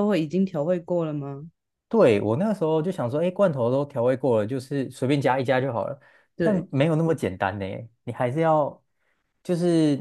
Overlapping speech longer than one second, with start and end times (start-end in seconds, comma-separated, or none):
none